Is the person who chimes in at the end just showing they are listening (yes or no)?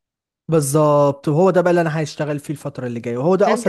no